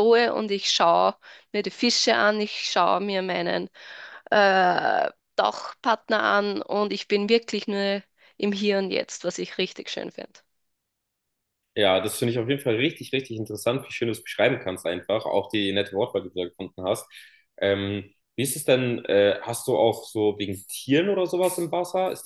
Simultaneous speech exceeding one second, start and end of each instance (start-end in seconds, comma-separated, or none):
none